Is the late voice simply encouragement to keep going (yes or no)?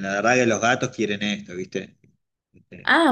no